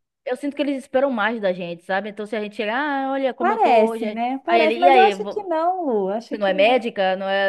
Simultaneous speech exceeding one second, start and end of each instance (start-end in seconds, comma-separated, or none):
3.4-5.5